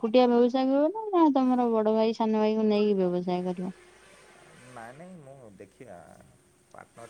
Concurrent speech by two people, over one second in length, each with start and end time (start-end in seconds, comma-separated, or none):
none